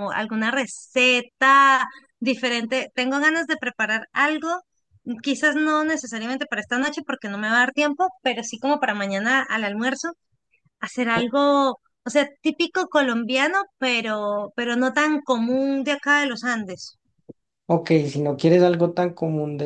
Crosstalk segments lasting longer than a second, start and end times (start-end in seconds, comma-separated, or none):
none